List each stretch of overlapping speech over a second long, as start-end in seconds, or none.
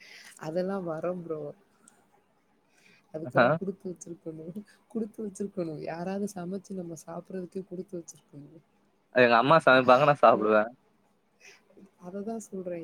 none